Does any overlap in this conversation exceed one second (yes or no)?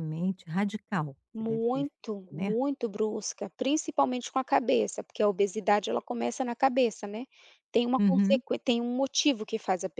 yes